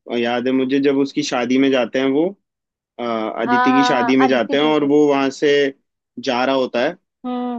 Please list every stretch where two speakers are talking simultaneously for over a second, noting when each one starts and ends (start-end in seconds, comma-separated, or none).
3.5-4.9